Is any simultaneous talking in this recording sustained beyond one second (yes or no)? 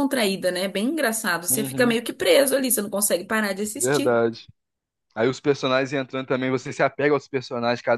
no